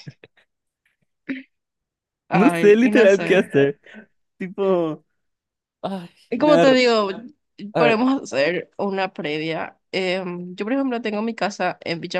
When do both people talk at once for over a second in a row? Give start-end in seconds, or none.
2.3-3.7